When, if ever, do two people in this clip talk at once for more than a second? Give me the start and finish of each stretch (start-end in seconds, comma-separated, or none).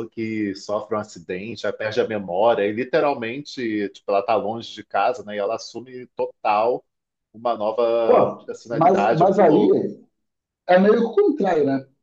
8.1-9.7